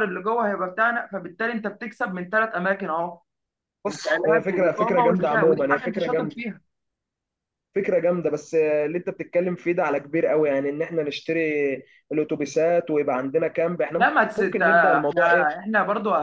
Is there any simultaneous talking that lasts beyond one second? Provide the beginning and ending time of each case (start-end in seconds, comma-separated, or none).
3.9-6.4, 13.9-15.5